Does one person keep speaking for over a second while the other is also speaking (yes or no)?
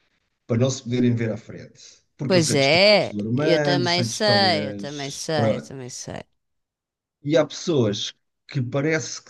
yes